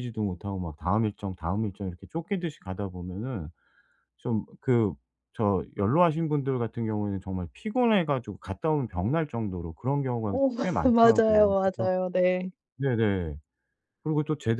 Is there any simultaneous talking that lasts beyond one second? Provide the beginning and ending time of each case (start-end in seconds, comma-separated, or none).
10.2-11.9